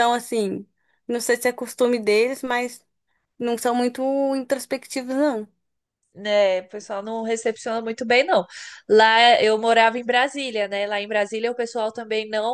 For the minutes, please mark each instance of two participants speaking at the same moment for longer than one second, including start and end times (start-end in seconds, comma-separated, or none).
none